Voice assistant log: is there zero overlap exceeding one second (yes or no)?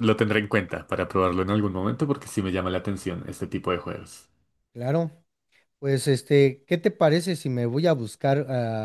yes